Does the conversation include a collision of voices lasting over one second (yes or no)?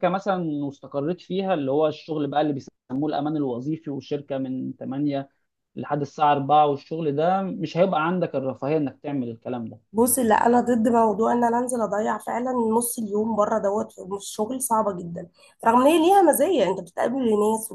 no